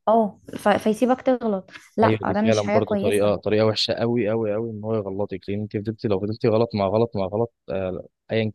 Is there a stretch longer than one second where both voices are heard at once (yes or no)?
yes